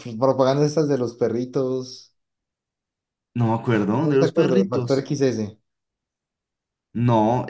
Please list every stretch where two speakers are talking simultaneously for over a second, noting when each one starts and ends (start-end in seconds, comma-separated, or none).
3.9-5.1